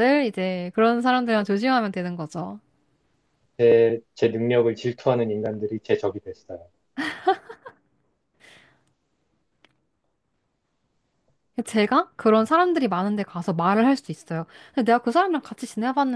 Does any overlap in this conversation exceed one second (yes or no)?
no